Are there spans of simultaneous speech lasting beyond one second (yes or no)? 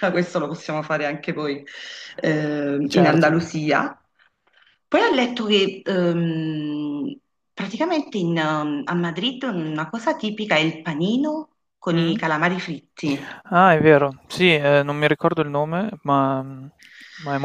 no